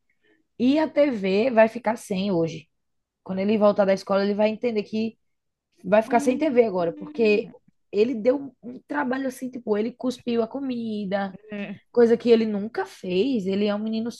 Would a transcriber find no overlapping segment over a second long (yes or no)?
no